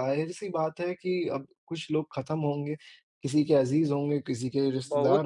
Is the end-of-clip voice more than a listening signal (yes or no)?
yes